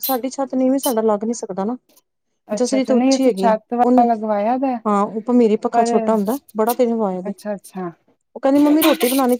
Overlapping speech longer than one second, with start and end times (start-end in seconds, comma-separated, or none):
2.6-4.0